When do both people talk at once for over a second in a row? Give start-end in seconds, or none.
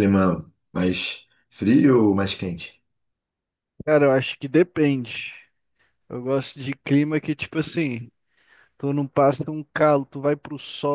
none